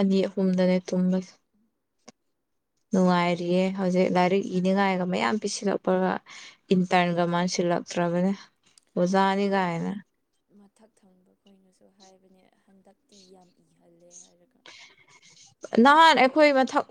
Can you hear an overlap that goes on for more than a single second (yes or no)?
no